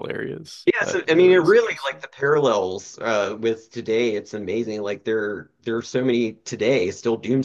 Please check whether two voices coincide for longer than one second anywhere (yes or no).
yes